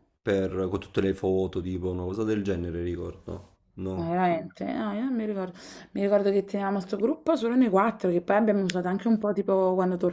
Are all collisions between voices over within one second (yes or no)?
yes